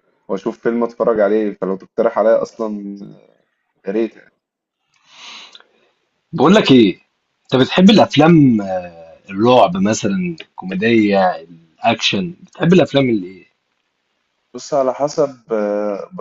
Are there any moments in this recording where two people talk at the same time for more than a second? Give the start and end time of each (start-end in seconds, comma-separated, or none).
none